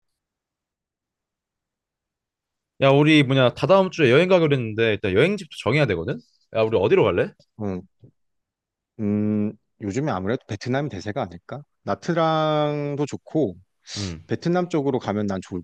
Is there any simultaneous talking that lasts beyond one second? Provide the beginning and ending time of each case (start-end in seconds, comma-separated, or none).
none